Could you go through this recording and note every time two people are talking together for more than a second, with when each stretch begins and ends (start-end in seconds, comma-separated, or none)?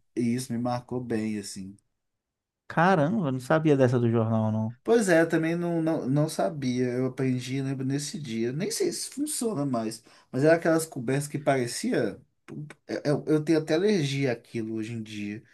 none